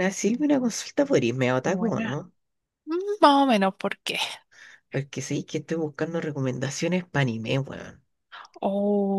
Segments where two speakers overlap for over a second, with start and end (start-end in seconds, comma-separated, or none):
none